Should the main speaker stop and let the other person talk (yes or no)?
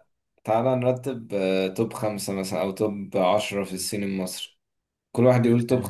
no